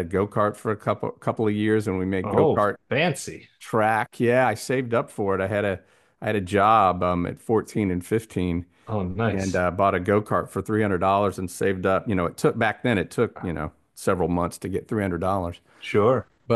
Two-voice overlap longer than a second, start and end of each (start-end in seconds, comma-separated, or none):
none